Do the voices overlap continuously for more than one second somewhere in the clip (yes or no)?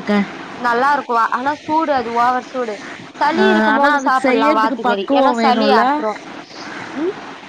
yes